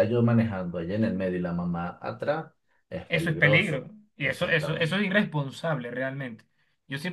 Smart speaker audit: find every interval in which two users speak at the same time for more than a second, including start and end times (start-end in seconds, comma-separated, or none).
3.1-5.0